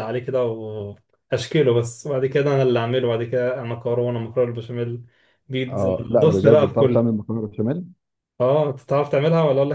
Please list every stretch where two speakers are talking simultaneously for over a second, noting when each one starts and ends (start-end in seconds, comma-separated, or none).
5.7-7.2